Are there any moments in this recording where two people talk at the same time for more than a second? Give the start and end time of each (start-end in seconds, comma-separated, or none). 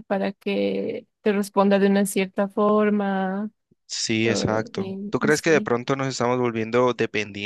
4.2-5.8